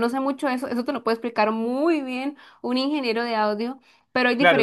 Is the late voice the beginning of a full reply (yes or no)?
yes